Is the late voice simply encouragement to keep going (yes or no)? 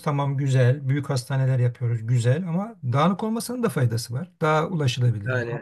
no